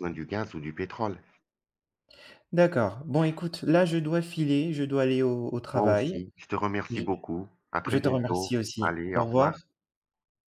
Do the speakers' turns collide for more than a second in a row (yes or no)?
yes